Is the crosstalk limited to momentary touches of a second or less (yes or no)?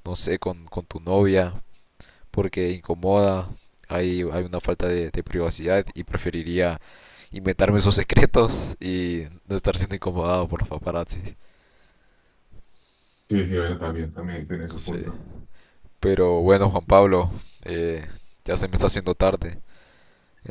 yes